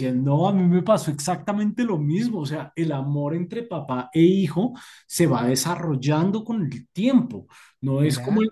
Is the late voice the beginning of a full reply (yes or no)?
no